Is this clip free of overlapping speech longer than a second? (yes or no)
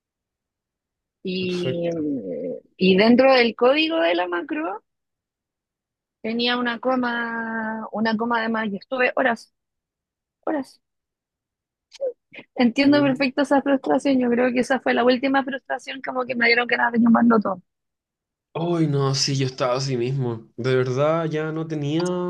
yes